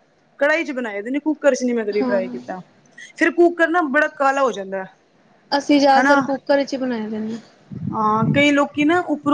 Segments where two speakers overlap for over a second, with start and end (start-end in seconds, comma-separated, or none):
none